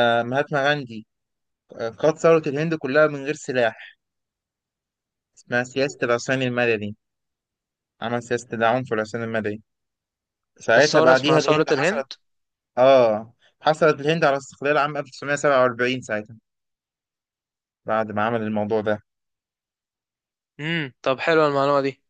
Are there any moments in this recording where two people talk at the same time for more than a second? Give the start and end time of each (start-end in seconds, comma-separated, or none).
10.8-12.1